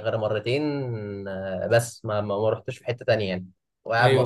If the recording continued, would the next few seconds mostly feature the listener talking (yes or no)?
yes